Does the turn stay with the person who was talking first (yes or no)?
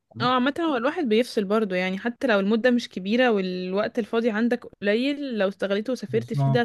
yes